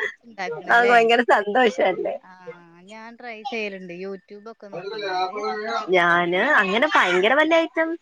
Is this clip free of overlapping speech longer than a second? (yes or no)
yes